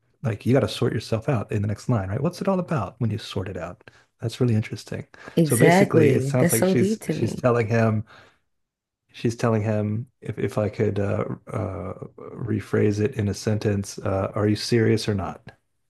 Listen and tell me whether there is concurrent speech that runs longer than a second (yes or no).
yes